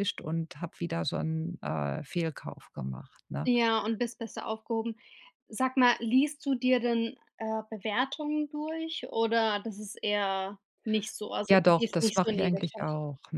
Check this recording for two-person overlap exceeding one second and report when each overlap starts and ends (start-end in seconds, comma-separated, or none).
11.5-12.8